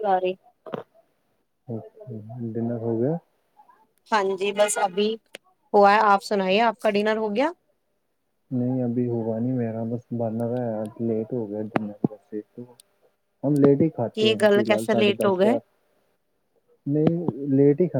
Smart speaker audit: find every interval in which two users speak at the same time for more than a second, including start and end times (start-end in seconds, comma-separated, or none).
none